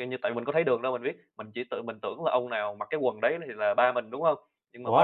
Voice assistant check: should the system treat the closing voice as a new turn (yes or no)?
yes